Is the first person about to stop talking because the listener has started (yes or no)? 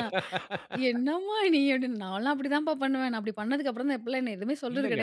yes